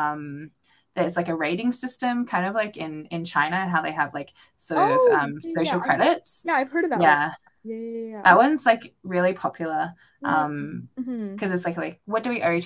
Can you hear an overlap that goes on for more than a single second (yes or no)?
yes